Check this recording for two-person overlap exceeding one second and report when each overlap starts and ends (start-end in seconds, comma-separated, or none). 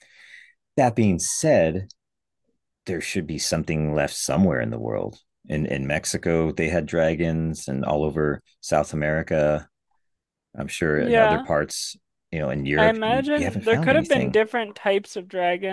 12.8-14.4